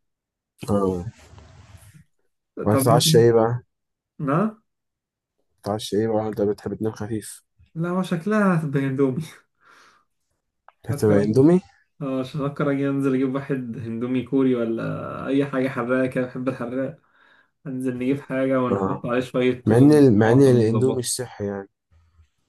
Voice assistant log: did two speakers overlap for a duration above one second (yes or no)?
yes